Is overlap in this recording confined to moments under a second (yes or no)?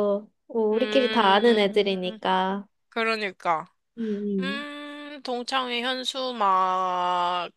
no